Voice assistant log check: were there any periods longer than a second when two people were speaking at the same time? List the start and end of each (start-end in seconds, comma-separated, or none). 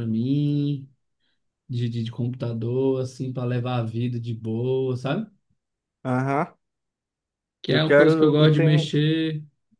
7.7-8.9